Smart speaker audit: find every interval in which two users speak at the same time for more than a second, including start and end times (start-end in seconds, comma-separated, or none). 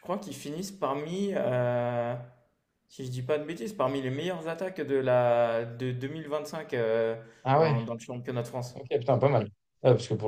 none